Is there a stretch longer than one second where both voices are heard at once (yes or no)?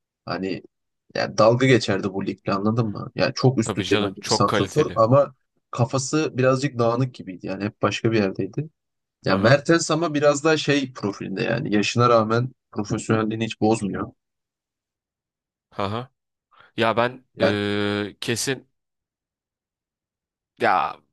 yes